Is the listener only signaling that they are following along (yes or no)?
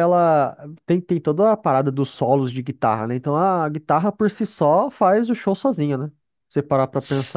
no